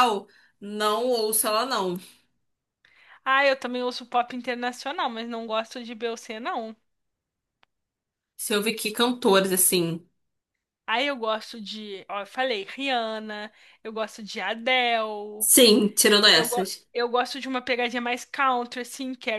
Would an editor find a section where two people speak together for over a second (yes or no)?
no